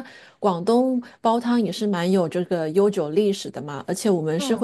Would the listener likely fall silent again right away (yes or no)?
yes